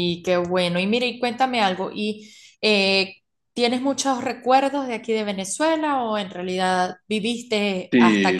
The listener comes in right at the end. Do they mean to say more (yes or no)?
yes